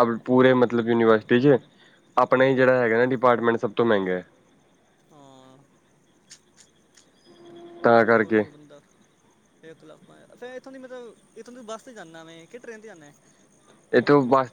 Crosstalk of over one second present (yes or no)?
no